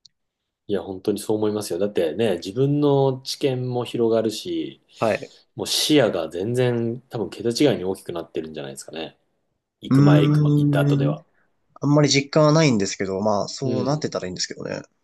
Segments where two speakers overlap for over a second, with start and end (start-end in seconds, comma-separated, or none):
9.9-11.2